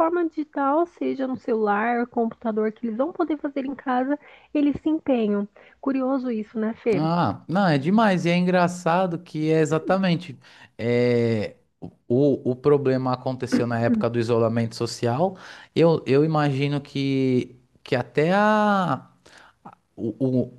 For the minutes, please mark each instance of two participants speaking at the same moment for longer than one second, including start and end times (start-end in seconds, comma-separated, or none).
none